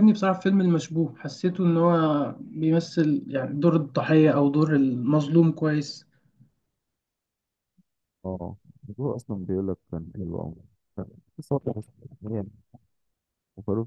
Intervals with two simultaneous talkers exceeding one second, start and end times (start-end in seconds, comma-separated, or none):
none